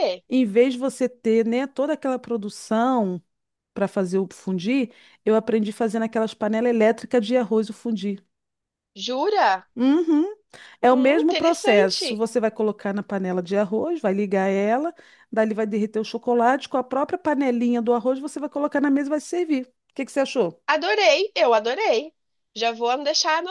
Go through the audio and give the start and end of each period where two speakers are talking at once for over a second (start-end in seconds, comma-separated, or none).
10.9-12.2